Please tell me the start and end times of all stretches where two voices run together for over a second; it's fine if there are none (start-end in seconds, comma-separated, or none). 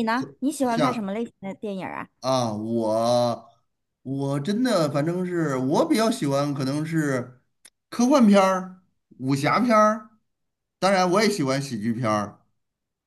none